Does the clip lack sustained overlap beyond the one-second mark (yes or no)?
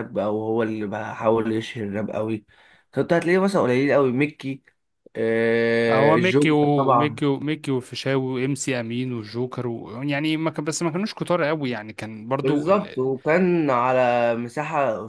no